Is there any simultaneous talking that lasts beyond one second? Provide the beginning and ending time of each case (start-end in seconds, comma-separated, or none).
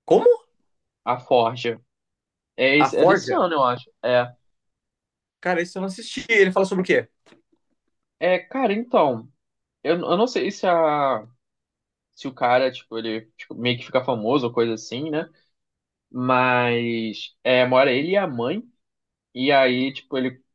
none